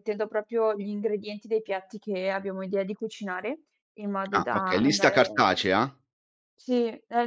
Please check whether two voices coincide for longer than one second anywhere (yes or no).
yes